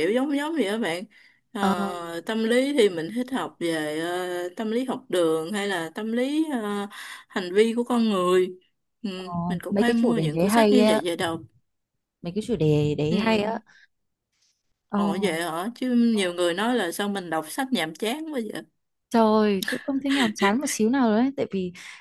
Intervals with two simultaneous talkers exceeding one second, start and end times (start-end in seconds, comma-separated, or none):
9.5-11.0